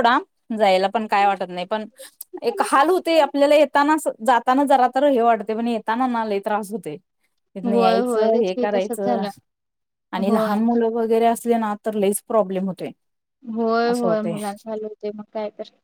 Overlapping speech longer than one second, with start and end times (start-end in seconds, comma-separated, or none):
7.7-9.2